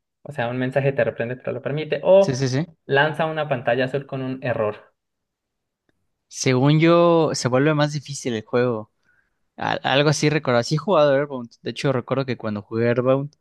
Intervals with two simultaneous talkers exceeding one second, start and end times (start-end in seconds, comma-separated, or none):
none